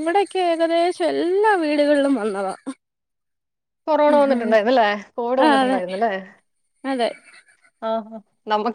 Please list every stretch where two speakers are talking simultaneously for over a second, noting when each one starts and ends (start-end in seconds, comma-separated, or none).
none